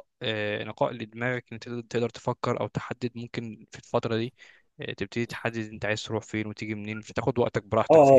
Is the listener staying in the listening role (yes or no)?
no